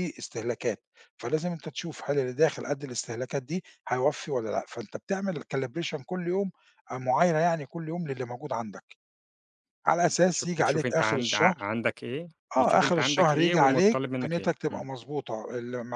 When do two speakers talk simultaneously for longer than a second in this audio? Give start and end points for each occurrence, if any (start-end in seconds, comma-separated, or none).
10.1-11.6, 12.6-14.8